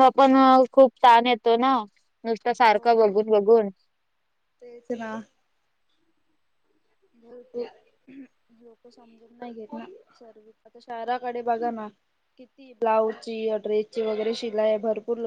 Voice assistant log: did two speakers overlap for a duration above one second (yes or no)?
no